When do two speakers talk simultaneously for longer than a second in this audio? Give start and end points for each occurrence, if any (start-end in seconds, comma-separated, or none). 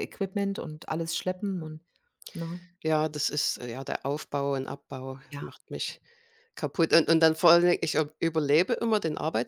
none